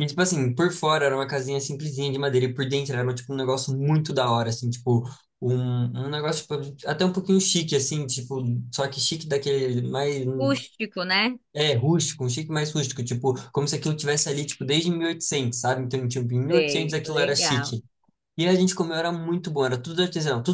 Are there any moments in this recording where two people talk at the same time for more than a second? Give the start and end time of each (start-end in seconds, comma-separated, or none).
16.5-17.8